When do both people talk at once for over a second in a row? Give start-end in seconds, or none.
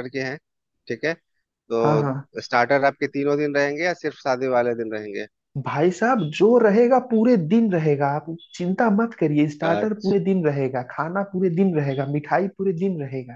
none